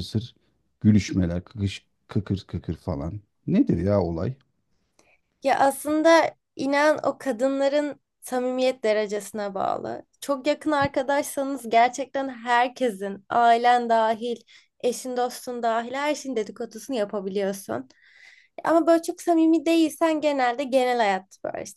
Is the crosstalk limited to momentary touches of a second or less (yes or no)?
yes